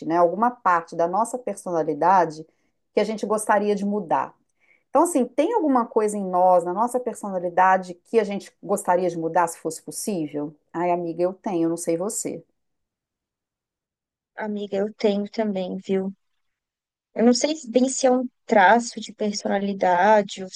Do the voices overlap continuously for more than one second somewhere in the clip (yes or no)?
no